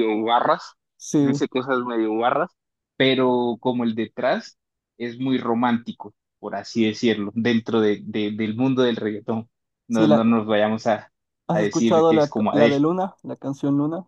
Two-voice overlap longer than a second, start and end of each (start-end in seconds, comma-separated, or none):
11.5-12.8